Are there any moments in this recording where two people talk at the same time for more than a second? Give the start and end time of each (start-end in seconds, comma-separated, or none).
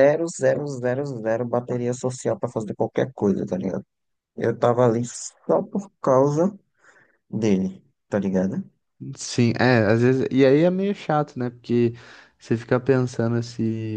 none